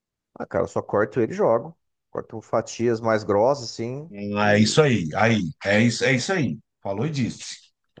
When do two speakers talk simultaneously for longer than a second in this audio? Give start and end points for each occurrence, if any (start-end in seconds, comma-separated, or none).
none